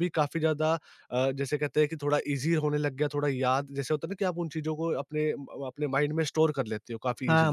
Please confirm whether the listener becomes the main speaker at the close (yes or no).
yes